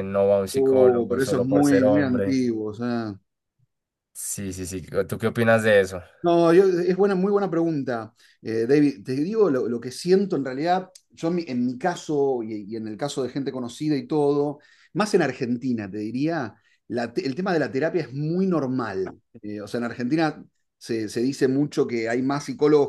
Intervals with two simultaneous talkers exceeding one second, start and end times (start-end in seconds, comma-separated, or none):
0.5-2.4